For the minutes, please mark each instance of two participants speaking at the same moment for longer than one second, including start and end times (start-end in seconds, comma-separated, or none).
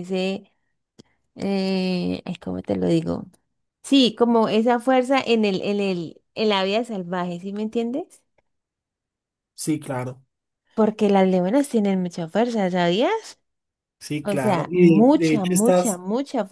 14.2-16.0